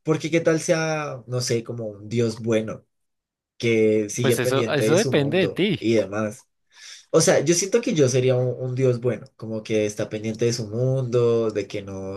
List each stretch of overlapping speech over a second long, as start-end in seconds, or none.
4.2-5.9